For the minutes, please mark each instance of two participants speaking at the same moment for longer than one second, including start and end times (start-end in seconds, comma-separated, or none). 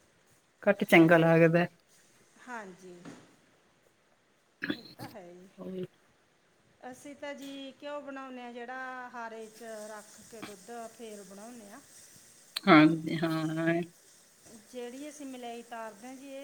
none